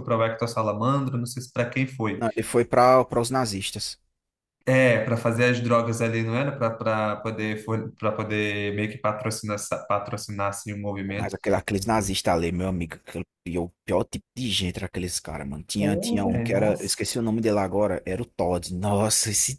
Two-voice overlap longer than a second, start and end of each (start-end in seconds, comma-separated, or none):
15.8-17.1